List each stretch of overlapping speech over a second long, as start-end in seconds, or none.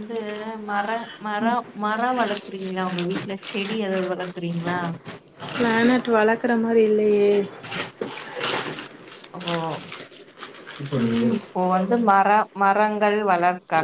none